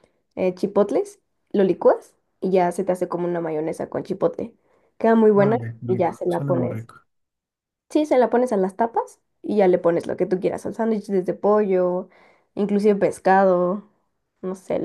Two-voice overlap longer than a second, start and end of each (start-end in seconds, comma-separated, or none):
5.3-6.9